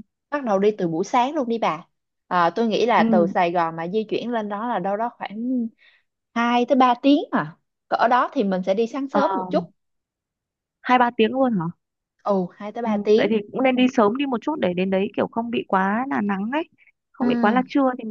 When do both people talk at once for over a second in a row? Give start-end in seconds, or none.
none